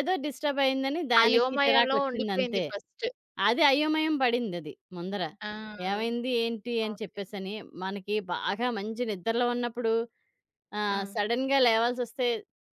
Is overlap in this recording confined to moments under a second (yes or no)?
no